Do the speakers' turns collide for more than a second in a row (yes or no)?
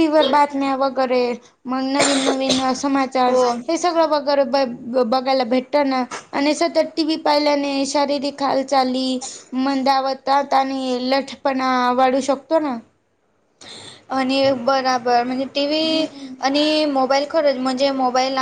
no